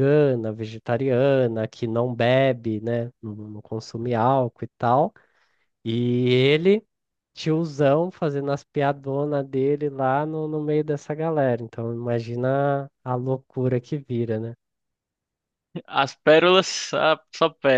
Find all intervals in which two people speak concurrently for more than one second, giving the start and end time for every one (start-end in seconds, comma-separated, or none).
none